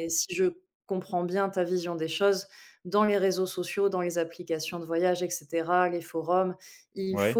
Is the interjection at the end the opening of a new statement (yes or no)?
no